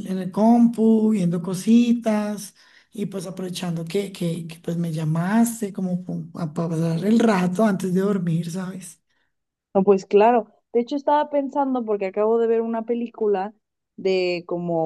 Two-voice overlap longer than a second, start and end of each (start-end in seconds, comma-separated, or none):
none